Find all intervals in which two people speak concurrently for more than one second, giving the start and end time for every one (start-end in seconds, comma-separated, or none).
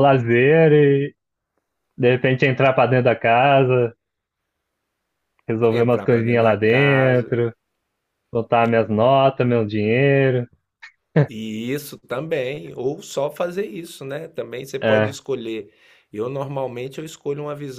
5.7-7.3